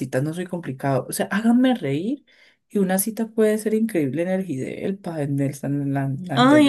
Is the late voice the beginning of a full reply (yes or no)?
yes